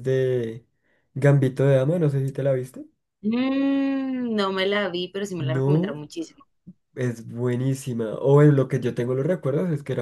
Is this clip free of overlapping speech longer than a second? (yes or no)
yes